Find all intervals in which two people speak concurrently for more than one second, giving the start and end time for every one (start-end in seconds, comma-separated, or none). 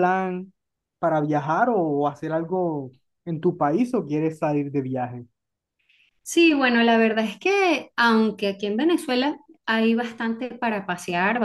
none